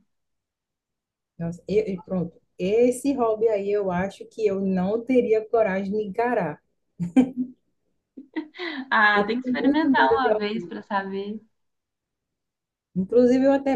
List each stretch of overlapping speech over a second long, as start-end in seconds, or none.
9.1-10.8